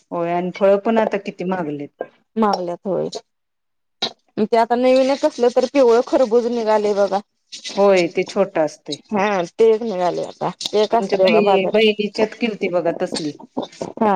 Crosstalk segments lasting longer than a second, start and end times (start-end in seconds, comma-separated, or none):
11.0-12.3